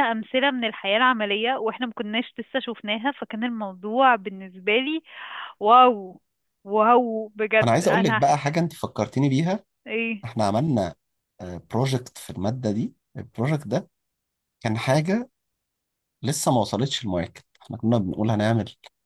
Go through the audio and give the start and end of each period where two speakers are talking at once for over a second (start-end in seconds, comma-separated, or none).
none